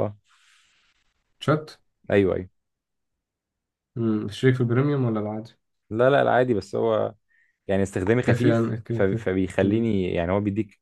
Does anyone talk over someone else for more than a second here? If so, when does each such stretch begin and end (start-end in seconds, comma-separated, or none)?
8.2-9.9